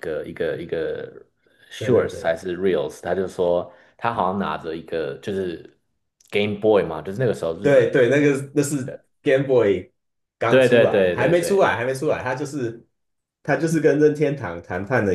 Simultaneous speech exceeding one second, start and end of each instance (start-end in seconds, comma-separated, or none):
10.5-11.7